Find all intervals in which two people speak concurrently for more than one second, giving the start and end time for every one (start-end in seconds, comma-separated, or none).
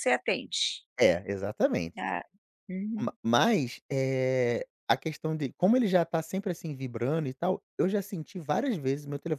none